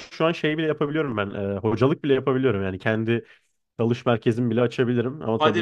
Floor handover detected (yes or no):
yes